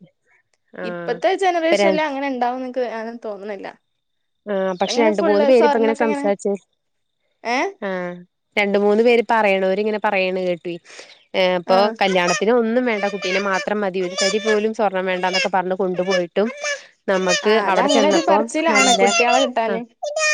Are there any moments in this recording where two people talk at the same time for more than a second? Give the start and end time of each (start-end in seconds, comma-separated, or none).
none